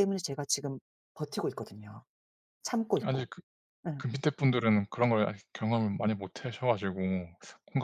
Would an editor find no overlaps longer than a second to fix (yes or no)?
yes